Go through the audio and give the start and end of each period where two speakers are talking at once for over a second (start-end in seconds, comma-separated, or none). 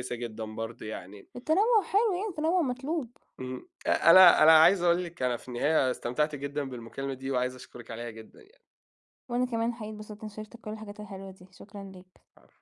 none